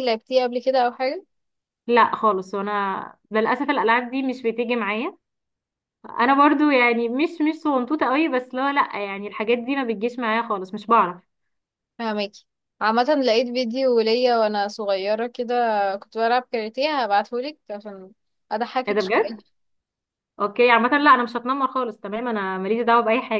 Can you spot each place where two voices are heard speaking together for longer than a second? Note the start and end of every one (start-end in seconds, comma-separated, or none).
none